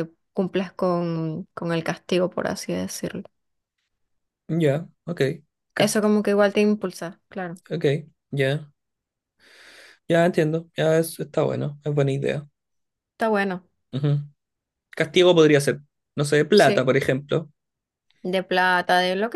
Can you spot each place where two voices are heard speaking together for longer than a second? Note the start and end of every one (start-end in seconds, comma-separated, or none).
none